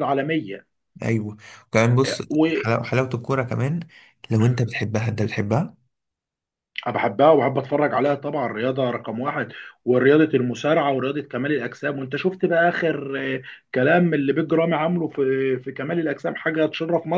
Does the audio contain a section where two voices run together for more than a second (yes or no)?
no